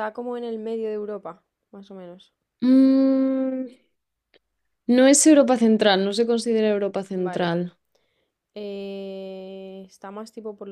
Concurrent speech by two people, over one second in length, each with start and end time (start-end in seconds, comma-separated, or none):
none